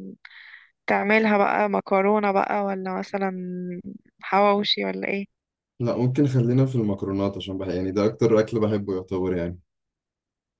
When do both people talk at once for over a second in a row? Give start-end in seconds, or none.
none